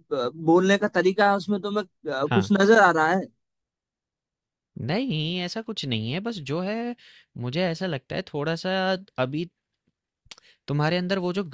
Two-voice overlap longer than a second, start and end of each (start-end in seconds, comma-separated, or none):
none